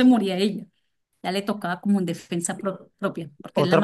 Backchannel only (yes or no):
no